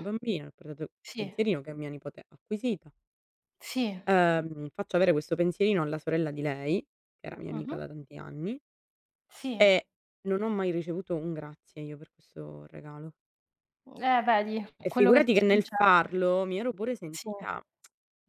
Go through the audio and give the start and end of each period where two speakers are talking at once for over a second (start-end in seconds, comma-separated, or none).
14.8-16.2